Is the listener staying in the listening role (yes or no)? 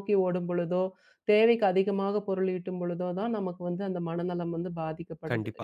no